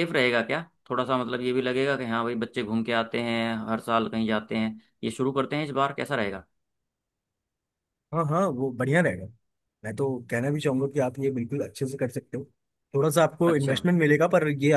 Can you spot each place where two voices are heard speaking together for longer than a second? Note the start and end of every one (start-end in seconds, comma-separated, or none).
none